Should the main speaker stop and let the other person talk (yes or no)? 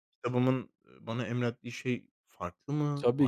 yes